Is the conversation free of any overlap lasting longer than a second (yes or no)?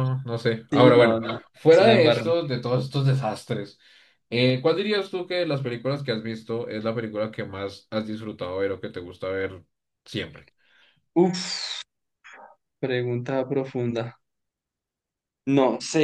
no